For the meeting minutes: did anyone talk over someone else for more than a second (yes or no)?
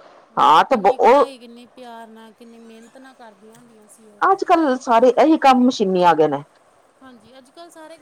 no